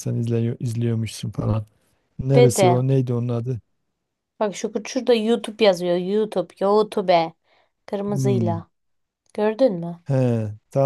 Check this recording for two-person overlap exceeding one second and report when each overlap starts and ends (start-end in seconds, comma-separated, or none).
none